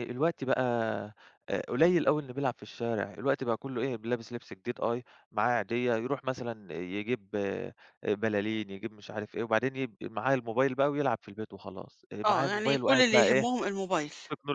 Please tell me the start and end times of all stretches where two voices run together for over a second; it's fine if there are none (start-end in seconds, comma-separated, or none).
12.3-13.5